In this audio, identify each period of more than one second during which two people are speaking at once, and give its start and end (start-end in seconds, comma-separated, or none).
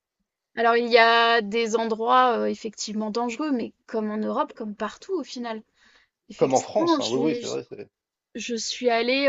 6.3-7.6